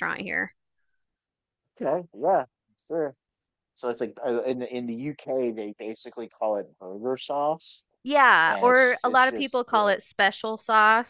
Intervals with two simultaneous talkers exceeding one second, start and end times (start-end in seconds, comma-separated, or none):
8.5-9.9